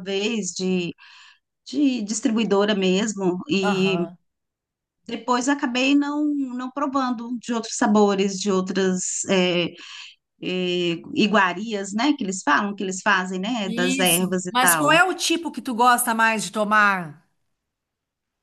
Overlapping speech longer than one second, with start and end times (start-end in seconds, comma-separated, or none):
13.7-15.0